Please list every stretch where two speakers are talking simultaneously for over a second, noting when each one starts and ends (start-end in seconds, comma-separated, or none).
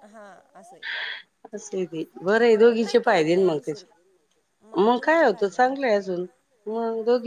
2.6-4.0, 4.9-6.1